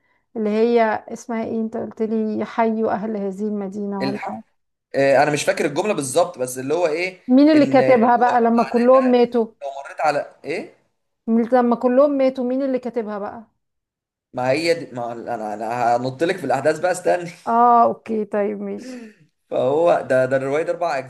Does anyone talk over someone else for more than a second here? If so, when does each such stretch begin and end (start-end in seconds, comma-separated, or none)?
7.5-9.3